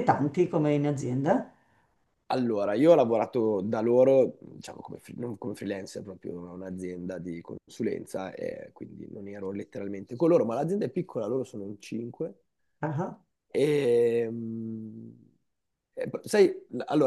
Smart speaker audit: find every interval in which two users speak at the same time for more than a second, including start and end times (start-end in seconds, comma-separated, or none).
none